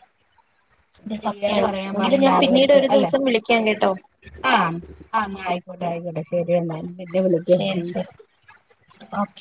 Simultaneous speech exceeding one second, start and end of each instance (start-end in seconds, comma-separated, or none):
1.2-3.1